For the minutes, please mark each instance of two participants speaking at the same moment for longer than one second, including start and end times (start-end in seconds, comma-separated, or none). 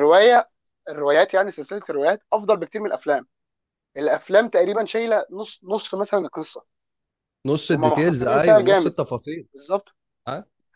7.7-8.9